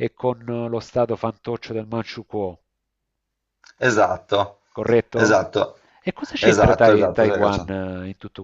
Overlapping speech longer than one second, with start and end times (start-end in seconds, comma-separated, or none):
6.4-7.7